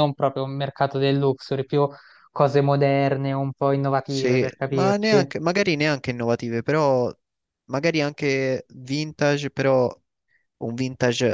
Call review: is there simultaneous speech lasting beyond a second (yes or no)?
yes